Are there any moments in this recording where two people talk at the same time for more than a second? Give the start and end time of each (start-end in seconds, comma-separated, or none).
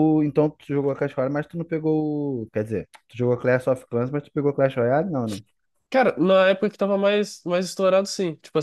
none